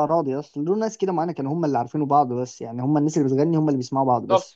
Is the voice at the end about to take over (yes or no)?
yes